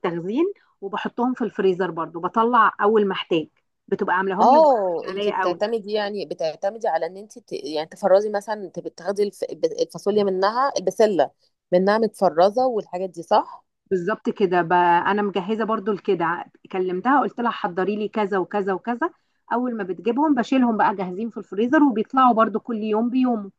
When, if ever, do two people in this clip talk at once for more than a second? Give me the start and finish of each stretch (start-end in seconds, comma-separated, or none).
4.4-5.6